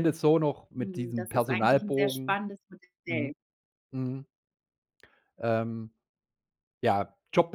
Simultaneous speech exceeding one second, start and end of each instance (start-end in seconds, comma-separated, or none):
0.8-2.4